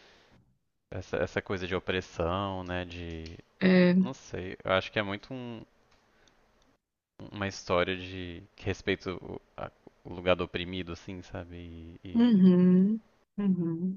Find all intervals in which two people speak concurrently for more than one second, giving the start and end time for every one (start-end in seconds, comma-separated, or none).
none